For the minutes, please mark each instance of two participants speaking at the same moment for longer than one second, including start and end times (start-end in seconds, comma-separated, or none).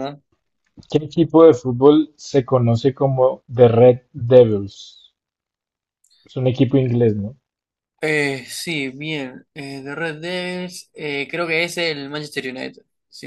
none